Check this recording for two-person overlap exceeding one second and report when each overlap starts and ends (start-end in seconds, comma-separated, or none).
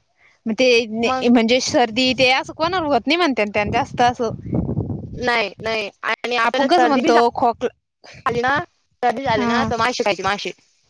6.5-7.8